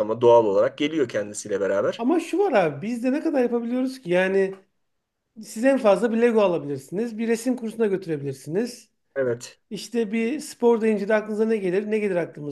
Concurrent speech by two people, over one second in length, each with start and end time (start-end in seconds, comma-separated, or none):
none